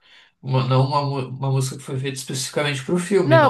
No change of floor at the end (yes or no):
no